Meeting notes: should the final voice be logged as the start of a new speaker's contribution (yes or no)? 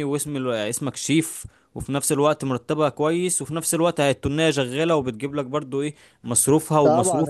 yes